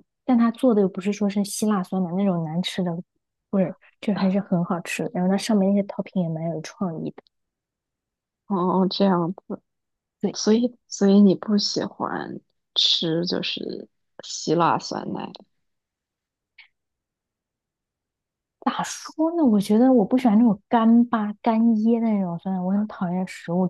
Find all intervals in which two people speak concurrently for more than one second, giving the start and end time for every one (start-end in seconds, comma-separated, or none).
none